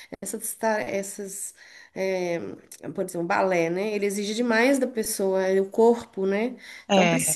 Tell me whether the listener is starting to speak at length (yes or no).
no